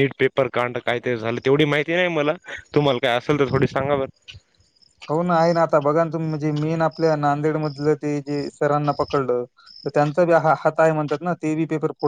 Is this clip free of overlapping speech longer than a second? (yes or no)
yes